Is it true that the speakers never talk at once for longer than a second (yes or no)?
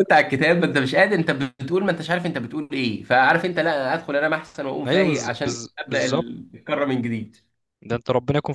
no